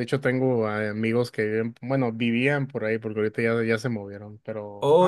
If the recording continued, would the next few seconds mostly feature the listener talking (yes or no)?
yes